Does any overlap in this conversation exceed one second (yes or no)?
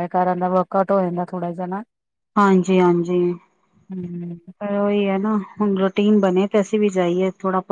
no